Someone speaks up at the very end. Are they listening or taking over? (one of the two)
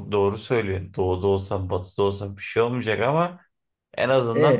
listening